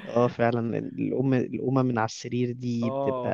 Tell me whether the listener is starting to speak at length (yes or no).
yes